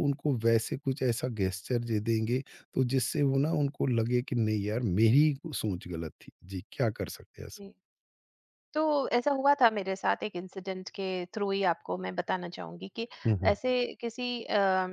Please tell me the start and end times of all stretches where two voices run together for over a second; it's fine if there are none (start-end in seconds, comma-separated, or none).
none